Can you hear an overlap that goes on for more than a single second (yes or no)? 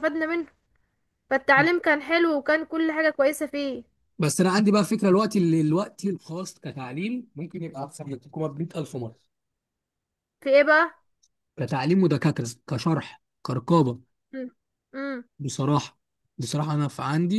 no